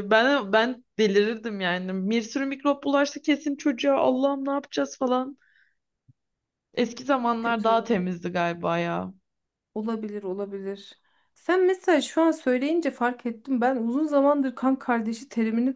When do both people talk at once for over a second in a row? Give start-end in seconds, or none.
none